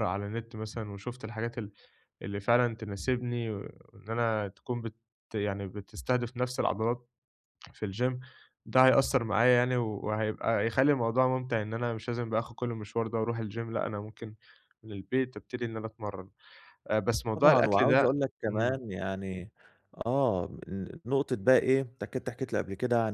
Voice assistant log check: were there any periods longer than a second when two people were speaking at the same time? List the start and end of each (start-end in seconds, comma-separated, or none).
17.3-18.8